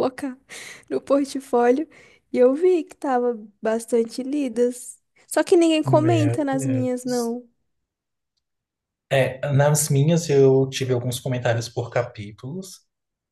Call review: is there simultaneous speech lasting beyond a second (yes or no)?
yes